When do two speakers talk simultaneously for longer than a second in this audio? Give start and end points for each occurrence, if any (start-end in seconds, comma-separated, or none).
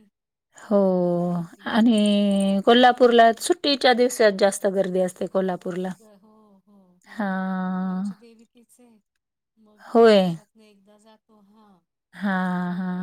none